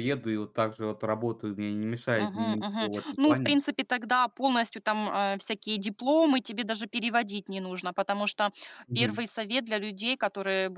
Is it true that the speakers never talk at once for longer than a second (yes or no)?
no